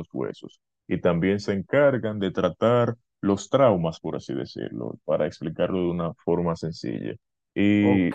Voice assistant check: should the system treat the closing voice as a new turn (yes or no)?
yes